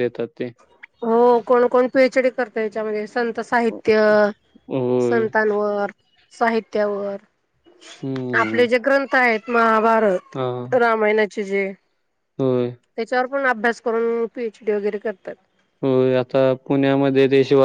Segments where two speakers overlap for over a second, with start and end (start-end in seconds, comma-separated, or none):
none